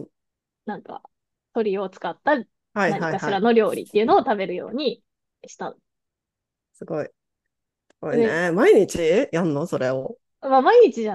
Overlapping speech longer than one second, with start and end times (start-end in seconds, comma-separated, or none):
2.9-4.3